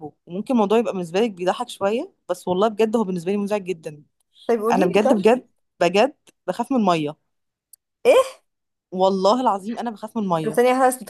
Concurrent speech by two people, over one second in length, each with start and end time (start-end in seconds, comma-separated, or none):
none